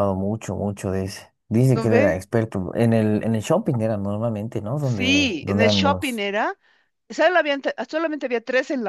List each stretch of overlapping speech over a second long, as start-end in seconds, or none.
4.8-6.2